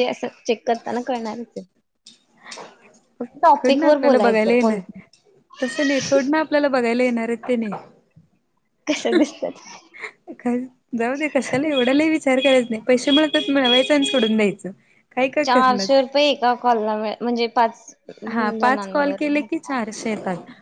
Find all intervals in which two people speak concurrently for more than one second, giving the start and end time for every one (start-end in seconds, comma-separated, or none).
3.5-4.8